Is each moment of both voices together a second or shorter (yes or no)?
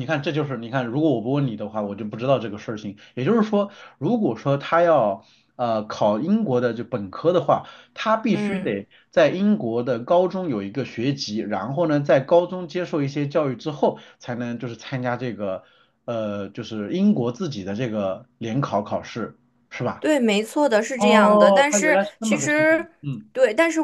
no